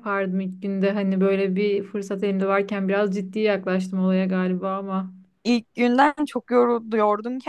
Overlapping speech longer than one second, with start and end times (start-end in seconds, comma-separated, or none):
none